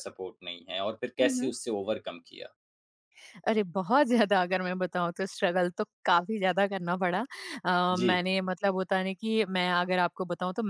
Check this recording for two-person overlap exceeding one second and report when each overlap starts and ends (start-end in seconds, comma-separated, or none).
none